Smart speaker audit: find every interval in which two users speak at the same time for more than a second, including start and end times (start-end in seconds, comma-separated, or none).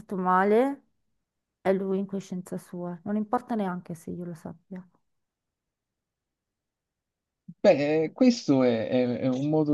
none